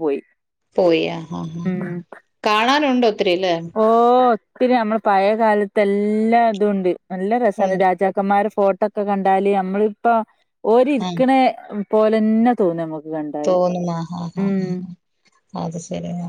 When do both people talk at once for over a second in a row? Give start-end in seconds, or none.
none